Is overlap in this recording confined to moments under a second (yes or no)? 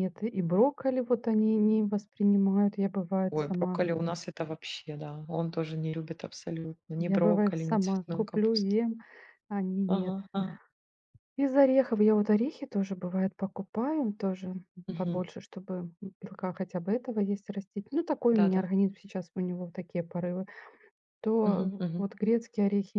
no